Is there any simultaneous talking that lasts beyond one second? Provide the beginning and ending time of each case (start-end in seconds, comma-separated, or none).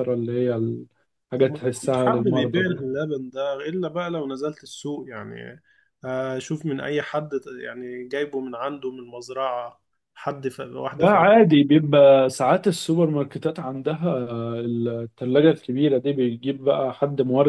1.4-2.8